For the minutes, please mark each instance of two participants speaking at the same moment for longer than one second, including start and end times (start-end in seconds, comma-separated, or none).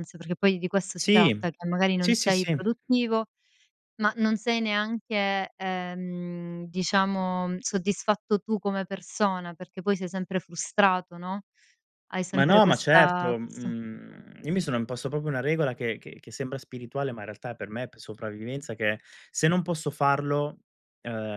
12.3-13.7